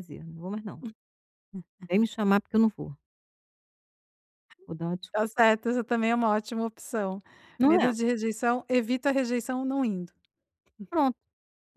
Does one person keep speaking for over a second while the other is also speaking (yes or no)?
no